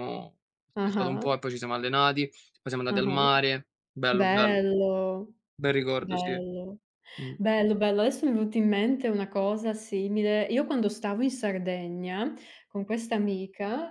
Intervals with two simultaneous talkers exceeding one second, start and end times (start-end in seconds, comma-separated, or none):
none